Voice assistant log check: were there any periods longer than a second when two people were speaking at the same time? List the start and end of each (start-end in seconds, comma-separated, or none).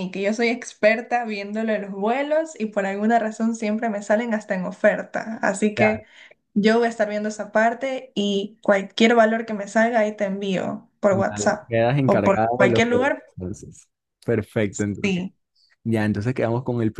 11.1-13.2